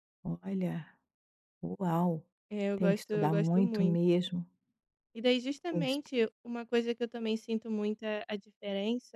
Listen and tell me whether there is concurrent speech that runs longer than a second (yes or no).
yes